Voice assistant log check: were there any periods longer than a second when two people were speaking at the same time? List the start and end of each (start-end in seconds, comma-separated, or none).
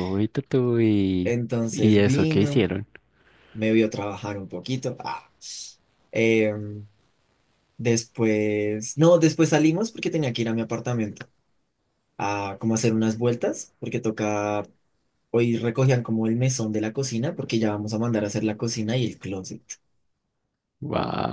1.2-2.7